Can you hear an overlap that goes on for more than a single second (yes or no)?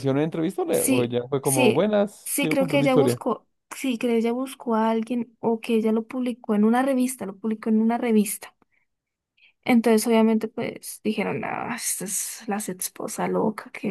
yes